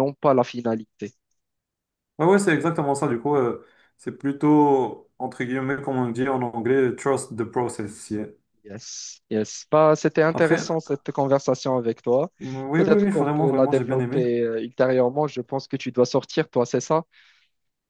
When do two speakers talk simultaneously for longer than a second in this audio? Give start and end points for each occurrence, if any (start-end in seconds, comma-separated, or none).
12.7-14.2